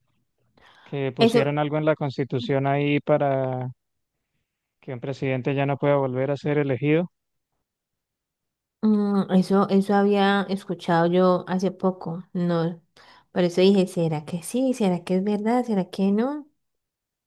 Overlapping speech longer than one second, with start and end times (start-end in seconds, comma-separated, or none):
none